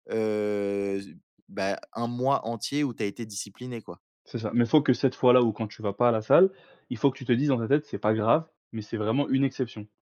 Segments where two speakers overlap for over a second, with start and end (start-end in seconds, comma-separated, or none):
none